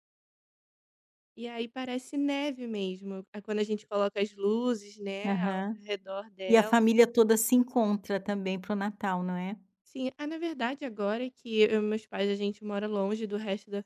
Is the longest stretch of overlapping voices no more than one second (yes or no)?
yes